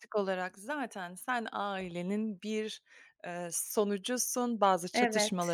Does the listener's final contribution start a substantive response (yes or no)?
no